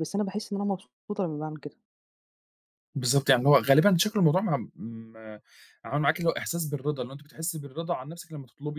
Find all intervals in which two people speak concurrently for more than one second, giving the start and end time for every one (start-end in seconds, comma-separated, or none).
none